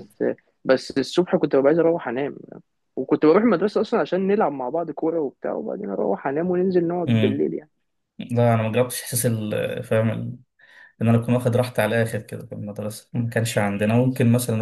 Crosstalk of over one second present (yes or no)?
no